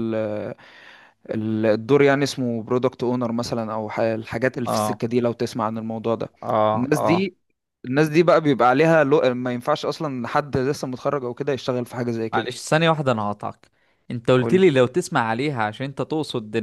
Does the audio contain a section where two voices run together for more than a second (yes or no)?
no